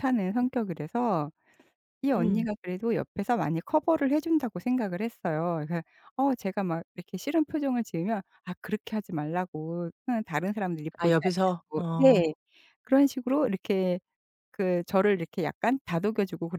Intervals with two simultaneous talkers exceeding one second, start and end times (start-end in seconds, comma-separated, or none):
11.0-12.3